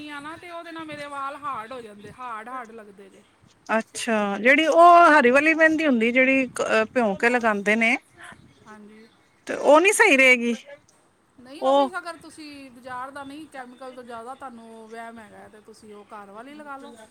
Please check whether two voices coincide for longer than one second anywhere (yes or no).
no